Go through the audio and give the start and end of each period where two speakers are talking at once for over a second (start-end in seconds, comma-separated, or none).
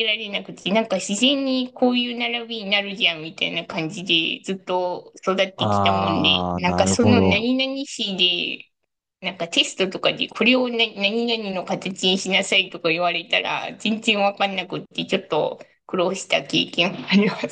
5.6-7.5